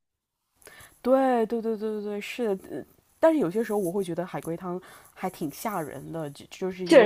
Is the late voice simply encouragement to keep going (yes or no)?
yes